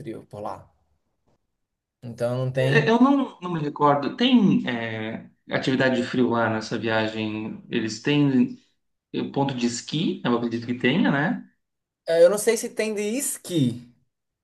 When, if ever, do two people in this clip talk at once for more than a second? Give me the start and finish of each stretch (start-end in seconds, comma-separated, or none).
none